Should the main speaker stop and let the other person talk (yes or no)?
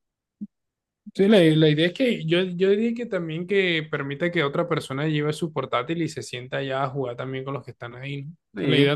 no